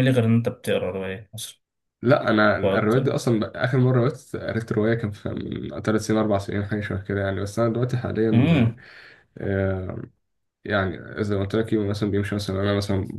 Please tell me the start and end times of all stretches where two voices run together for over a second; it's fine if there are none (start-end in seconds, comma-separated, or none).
none